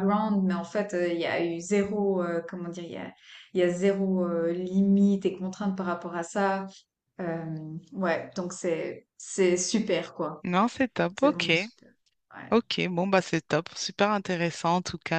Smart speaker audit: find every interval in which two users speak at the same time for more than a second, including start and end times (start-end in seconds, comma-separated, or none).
none